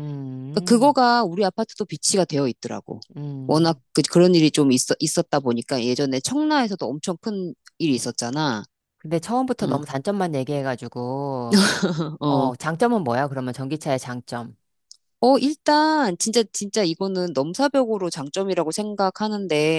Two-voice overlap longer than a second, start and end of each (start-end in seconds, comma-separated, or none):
none